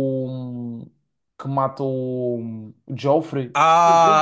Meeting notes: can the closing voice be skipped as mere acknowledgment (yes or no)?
no